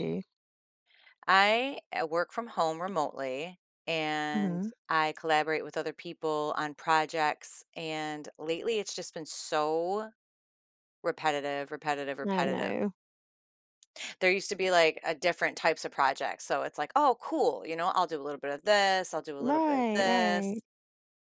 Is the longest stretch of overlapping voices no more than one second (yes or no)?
no